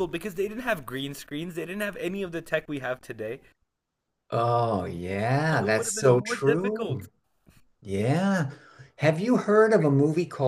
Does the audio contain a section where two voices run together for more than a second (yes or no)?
yes